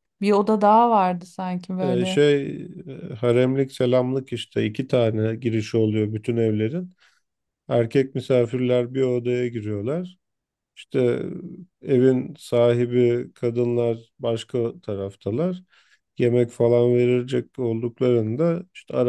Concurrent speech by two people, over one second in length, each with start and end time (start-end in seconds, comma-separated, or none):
none